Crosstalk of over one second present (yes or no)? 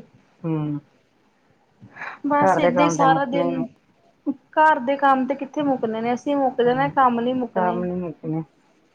yes